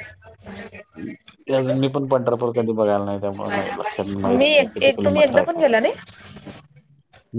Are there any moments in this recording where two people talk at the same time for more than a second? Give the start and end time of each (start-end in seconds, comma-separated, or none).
4.4-5.7